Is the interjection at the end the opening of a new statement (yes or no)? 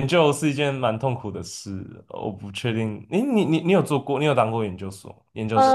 yes